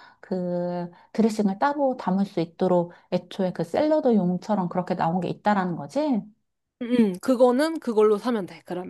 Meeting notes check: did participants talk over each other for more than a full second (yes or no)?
no